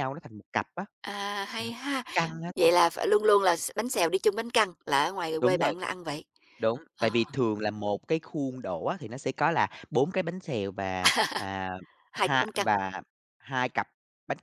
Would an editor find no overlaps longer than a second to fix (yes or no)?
yes